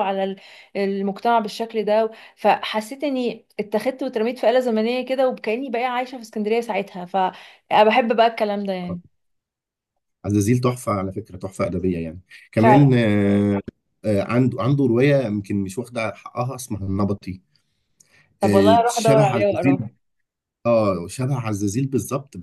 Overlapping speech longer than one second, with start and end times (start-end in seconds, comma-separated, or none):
18.4-19.9